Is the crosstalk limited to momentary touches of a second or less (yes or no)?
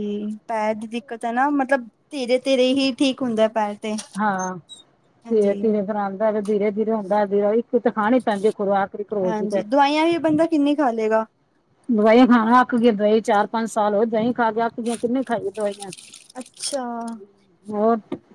yes